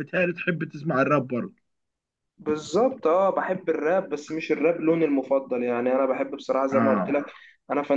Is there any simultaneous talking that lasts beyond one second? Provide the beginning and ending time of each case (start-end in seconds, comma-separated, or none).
none